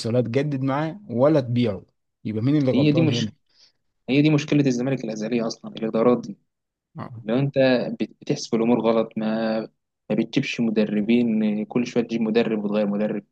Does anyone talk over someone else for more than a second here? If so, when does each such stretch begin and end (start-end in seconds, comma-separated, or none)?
none